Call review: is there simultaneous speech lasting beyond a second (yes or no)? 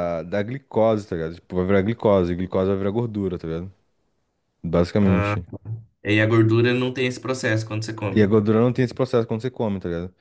no